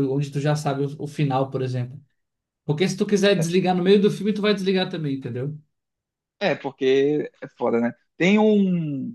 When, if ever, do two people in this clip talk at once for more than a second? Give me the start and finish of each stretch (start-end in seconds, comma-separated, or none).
none